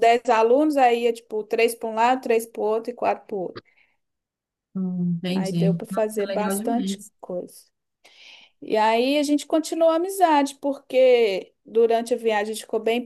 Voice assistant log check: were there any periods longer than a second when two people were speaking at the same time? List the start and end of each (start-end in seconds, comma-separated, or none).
5.3-7.1